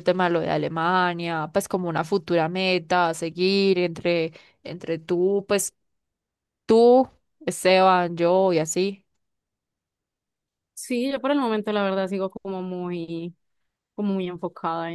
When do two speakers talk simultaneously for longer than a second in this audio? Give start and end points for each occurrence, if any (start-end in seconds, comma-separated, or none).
none